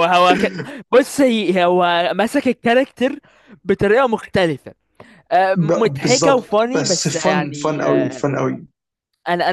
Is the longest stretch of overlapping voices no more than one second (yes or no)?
no